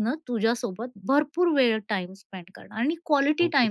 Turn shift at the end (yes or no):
no